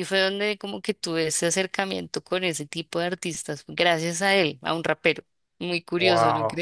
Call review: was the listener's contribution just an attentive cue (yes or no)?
no